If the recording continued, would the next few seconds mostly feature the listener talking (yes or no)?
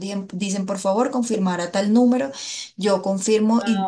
no